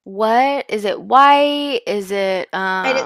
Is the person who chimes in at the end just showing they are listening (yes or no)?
no